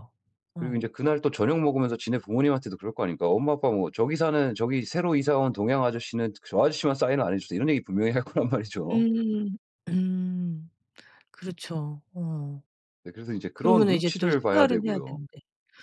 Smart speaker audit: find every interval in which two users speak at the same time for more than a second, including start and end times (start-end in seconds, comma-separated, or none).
13.5-15.2